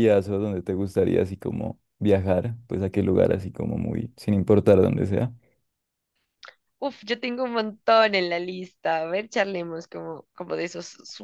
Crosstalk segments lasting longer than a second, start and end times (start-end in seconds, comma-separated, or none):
none